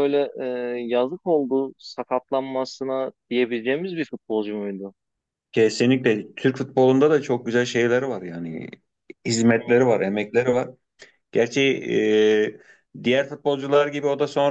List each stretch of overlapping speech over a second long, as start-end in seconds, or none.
none